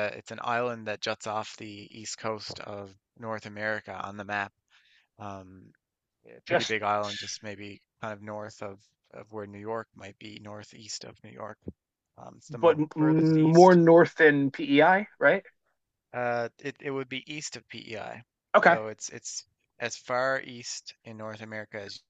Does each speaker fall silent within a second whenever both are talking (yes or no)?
no